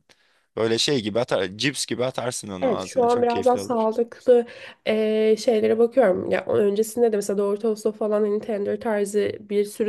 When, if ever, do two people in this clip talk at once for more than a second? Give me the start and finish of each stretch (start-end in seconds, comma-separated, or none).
2.6-3.9